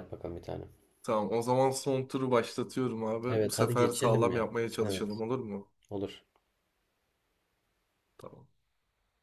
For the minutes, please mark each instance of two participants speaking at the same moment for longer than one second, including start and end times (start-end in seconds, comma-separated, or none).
3.3-5.2